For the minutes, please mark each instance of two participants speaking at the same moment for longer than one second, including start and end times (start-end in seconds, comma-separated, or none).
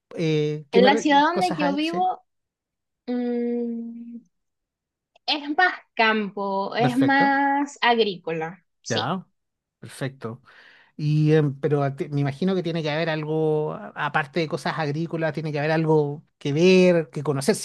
0.7-2.1